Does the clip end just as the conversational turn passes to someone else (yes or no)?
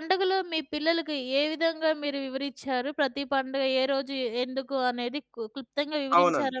yes